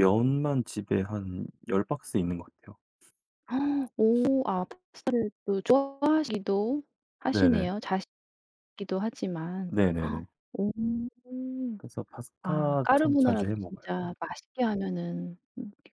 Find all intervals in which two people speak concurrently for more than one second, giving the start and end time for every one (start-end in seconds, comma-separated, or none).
12.4-13.9